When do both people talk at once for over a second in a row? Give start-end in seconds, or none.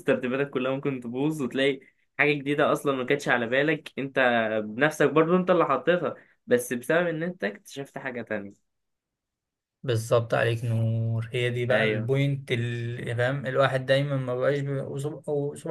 none